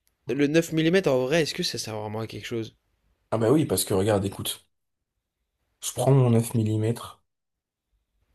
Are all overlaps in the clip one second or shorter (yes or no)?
yes